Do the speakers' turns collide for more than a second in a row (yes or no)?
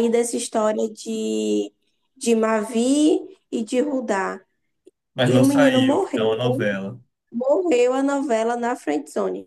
yes